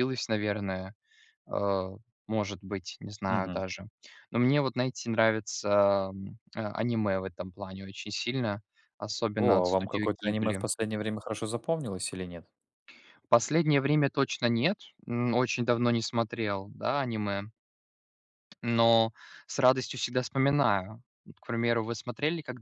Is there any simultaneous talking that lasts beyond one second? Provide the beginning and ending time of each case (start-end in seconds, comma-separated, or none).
9.4-10.6